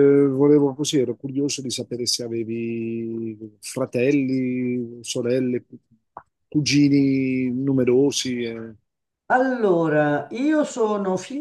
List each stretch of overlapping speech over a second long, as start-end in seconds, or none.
none